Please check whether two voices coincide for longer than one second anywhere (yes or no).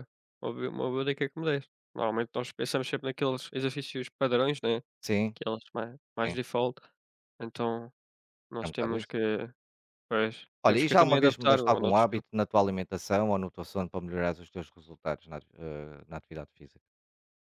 yes